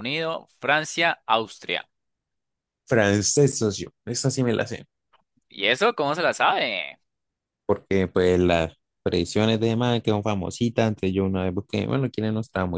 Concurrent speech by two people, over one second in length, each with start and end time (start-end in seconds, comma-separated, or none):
none